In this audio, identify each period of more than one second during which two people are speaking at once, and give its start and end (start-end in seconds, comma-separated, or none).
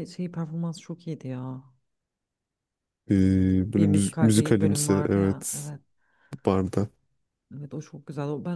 3.7-5.7